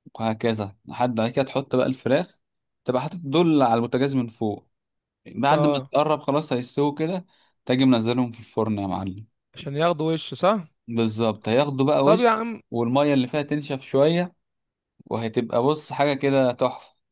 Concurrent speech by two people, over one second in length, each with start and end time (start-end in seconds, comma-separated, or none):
none